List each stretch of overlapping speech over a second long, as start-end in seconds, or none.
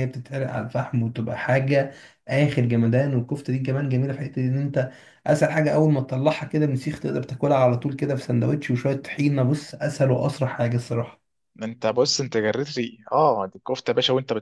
none